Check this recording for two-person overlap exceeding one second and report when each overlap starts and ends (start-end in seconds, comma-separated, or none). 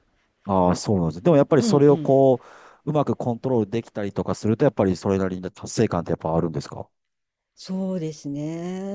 none